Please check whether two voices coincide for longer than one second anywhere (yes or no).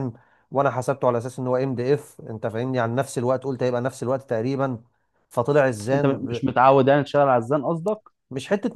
no